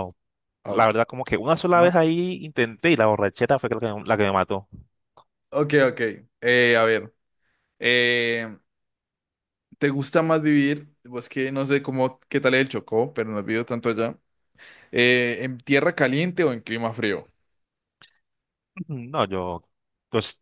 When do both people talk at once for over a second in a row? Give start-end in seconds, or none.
none